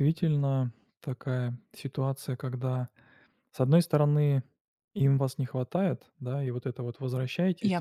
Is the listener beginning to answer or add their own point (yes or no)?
no